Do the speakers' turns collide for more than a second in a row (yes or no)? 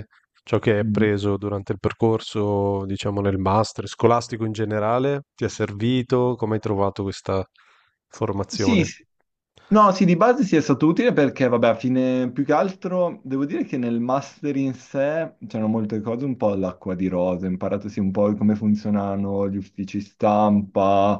no